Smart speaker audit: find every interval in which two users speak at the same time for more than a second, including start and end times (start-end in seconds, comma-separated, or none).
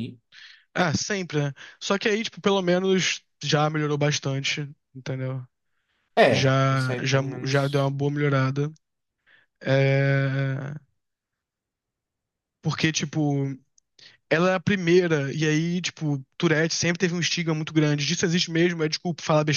6.3-7.9